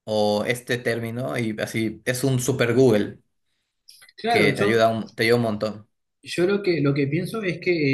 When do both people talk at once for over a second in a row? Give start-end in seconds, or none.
none